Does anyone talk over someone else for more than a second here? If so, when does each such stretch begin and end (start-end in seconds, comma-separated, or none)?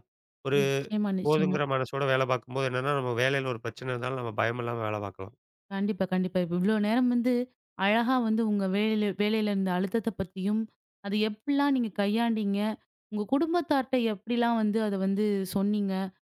none